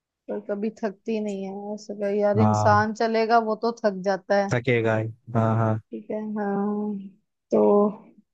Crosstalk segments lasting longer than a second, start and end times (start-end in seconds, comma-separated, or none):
none